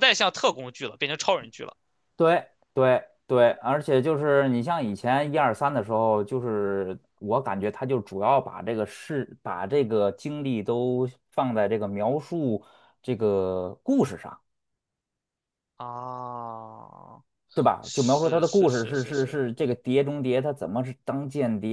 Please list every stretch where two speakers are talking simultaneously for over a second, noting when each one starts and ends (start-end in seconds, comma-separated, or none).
17.8-19.4